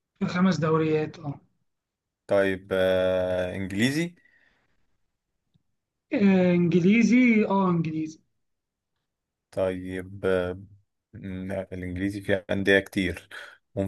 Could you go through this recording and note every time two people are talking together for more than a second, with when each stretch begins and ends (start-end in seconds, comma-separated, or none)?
none